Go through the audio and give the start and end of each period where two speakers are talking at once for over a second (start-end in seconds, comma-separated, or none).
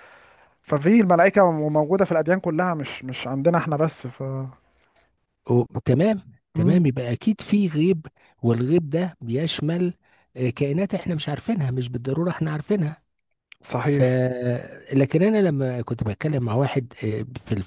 none